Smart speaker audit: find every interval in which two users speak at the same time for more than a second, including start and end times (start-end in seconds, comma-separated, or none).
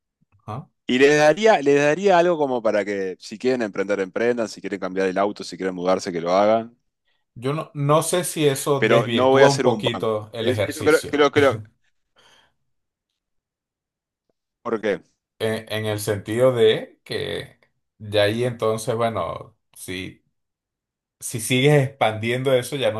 8.8-11.2